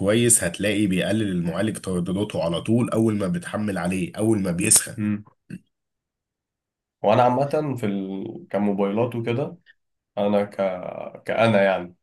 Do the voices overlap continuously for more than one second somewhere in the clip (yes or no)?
no